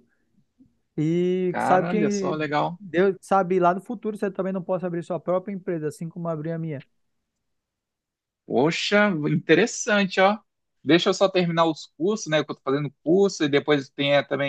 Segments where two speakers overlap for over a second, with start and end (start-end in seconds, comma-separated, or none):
1.5-2.8